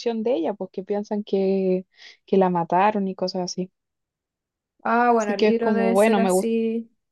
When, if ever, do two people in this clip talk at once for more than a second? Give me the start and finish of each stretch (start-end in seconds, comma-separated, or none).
5.1-6.5